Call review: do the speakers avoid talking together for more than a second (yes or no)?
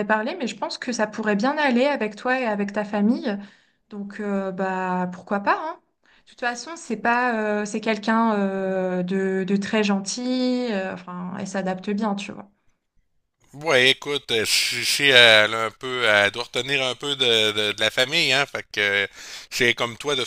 yes